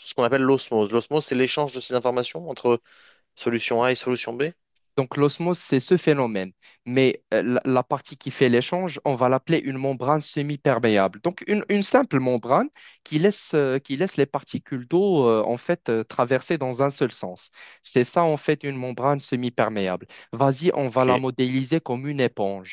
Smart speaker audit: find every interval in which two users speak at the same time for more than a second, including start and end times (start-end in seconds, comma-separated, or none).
none